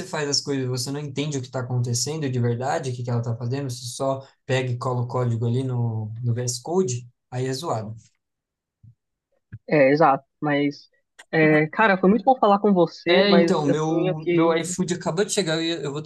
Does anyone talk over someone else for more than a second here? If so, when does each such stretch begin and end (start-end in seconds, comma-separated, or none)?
13.1-14.6